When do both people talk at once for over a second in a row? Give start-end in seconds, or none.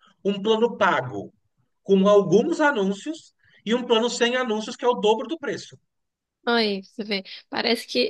none